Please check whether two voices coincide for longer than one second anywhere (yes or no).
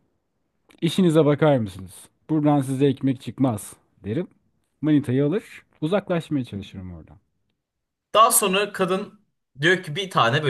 no